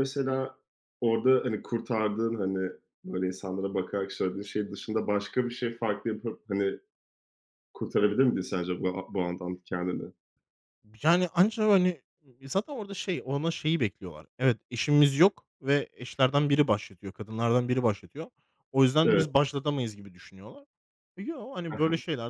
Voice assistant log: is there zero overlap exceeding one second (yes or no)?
yes